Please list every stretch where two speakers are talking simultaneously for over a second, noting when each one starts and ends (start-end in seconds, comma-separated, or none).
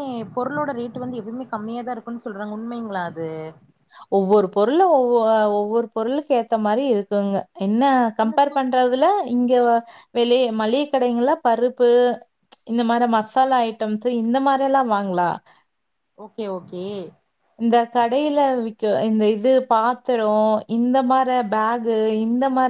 none